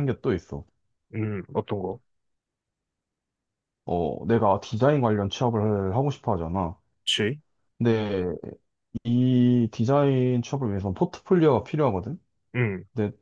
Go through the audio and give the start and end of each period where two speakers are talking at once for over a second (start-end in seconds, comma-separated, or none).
none